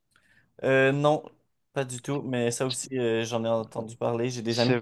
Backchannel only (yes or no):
no